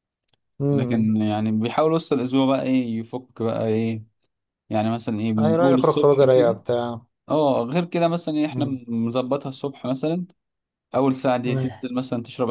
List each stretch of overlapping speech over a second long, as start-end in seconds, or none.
5.4-6.6